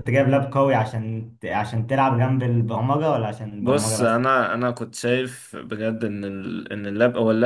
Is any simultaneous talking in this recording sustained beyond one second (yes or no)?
no